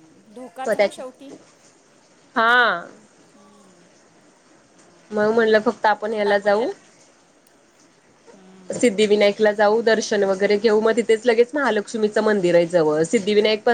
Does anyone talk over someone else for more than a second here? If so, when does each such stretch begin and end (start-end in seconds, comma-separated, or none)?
none